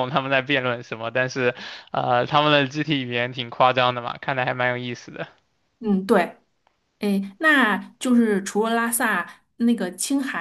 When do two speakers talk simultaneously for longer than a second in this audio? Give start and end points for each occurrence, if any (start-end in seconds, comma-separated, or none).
none